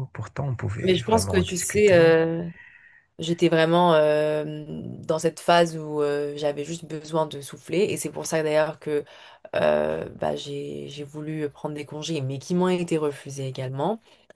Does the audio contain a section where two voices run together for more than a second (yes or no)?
yes